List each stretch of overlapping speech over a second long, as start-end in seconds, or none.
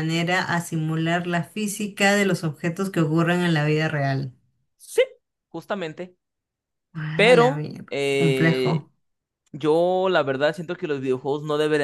7.1-8.9